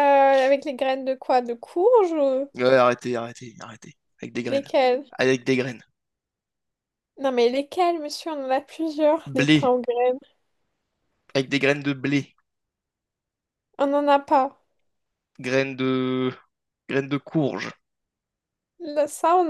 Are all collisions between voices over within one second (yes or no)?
yes